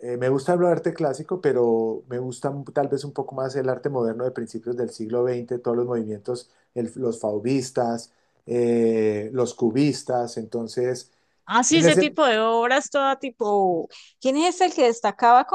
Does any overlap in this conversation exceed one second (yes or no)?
no